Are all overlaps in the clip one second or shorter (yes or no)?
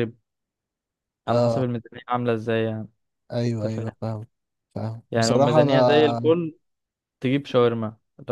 no